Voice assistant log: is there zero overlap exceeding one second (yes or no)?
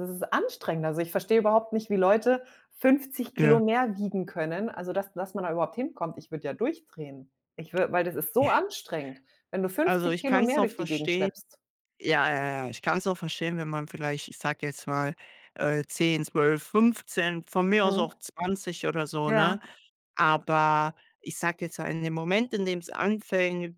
no